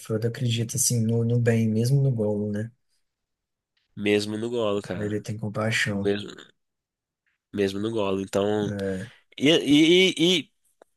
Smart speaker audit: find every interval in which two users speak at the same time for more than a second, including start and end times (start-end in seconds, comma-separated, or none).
none